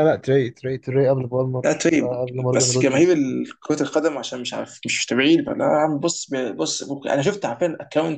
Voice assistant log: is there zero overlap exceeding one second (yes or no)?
no